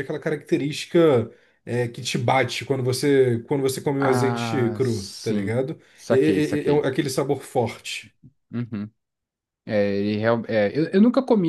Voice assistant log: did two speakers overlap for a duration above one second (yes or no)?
yes